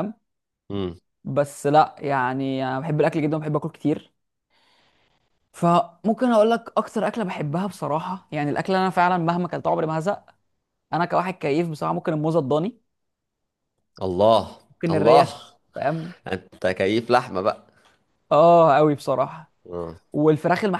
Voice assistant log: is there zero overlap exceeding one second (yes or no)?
yes